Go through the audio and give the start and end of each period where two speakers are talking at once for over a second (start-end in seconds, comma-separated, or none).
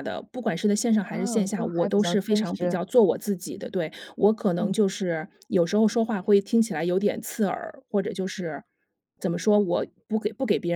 1.0-2.8